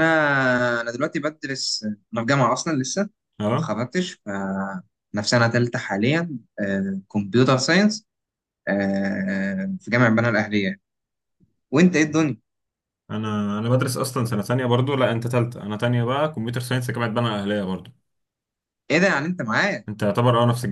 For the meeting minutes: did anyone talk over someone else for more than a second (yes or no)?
no